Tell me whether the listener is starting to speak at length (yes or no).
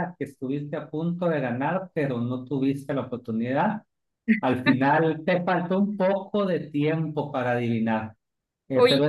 no